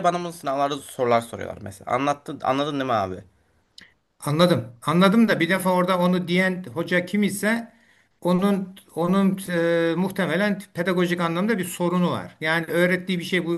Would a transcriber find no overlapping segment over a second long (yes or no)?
yes